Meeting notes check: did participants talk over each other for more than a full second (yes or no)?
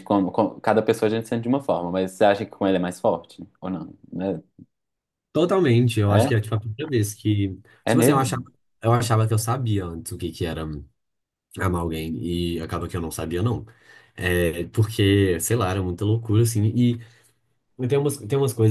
no